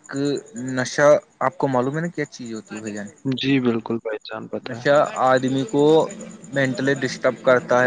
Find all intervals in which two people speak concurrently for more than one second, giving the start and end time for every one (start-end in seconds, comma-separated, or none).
none